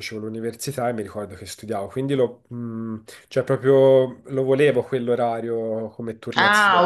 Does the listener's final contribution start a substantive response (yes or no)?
yes